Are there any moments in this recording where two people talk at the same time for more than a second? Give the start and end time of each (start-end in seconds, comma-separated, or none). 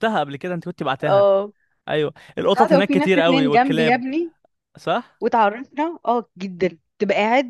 2.5-4.0